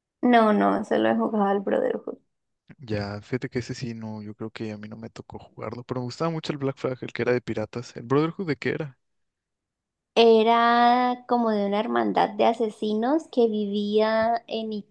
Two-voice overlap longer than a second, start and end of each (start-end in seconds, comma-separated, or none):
none